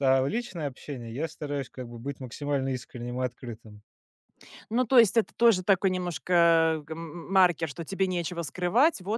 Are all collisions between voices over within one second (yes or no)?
yes